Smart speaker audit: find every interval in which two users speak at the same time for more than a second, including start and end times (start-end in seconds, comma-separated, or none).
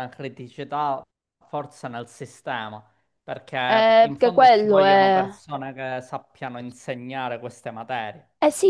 3.7-5.2